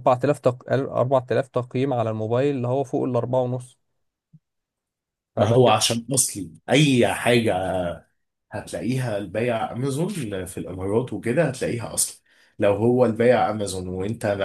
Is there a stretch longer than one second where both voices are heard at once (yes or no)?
no